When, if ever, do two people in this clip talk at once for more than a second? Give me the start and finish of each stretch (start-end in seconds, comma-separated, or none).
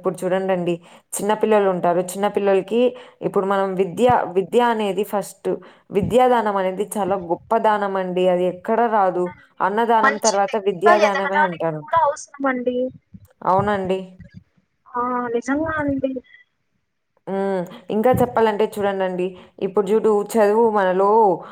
10.1-11.9